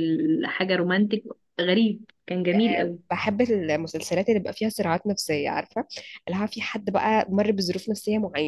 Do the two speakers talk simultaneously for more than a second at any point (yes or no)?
no